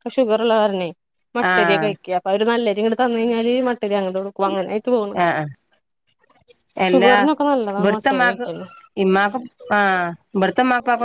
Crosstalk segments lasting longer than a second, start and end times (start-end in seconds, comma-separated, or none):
none